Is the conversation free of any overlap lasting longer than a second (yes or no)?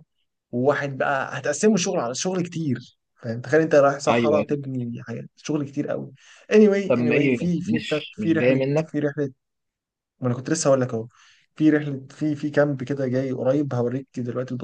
no